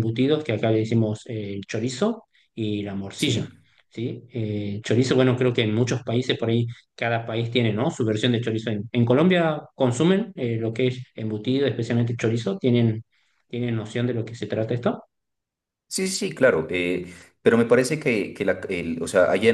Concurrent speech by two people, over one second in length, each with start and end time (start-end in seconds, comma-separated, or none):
none